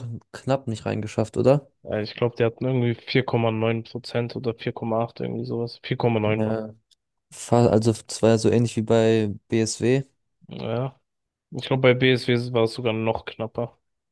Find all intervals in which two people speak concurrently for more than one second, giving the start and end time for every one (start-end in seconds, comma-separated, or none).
none